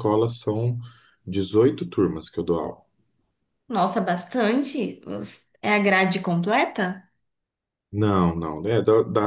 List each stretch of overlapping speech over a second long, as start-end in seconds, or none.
none